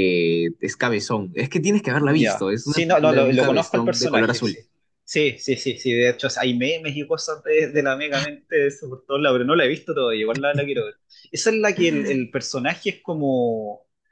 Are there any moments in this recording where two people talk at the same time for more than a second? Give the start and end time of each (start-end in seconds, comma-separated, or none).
2.0-4.6